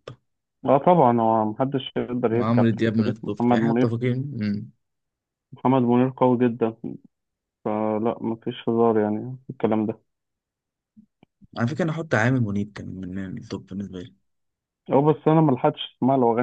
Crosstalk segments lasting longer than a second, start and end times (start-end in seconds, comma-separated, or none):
2.3-3.9